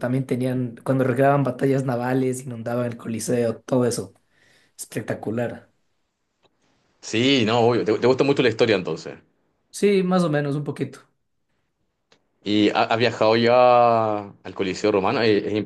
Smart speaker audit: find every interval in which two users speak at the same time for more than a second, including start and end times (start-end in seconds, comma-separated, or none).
none